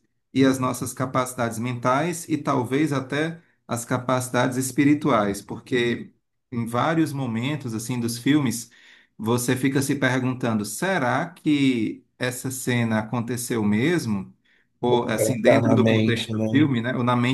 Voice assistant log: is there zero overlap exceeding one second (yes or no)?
no